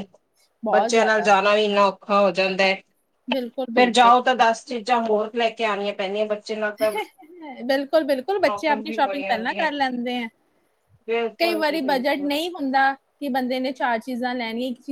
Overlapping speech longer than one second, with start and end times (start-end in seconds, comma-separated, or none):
8.3-9.7